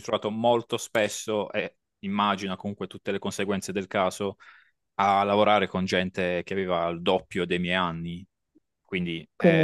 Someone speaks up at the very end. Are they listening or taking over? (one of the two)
taking over